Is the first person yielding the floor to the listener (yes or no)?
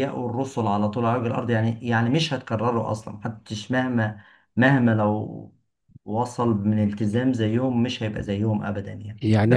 yes